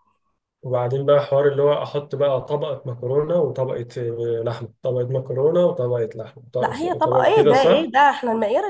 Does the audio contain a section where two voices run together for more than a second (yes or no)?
yes